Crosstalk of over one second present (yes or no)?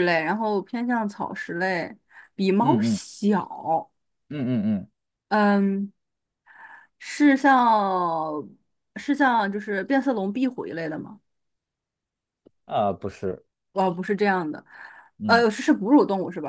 no